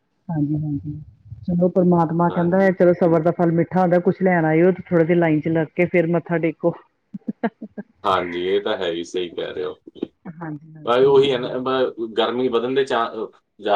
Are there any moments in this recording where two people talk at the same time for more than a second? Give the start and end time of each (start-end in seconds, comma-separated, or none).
none